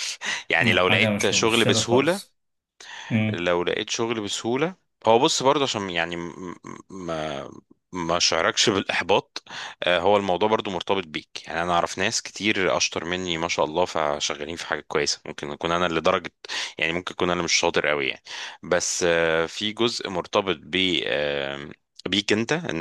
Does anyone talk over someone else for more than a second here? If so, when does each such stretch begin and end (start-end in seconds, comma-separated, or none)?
0.6-2.2